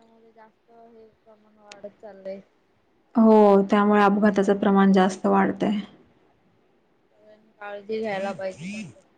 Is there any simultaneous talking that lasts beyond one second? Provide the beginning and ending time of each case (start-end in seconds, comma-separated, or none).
none